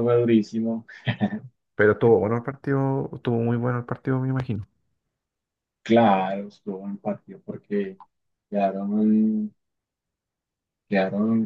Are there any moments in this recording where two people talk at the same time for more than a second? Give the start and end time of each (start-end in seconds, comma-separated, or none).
none